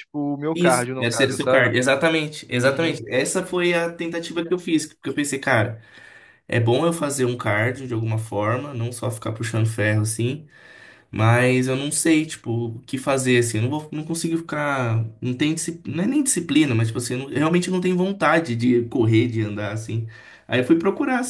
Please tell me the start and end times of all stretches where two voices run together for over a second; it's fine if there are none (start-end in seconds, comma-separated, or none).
0.5-1.8